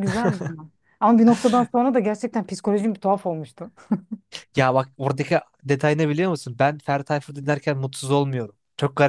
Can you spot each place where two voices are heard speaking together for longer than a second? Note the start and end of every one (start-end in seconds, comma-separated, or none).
none